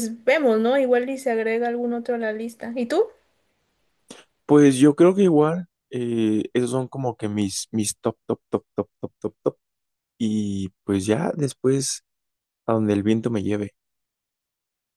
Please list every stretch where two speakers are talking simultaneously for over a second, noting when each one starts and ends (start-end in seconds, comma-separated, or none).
none